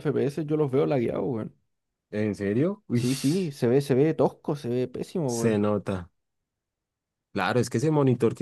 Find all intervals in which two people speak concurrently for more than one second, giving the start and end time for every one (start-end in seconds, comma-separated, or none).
none